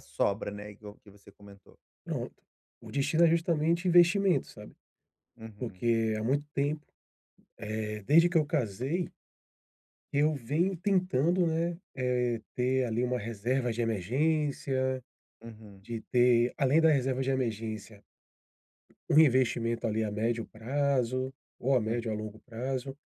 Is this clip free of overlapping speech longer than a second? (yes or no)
yes